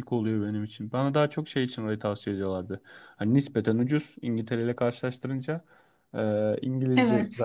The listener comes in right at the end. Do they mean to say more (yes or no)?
no